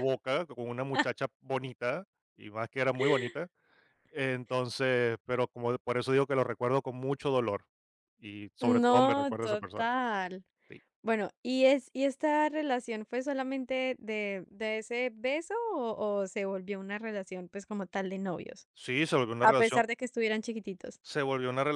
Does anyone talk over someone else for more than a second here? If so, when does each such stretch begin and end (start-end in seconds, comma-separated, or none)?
8.6-9.8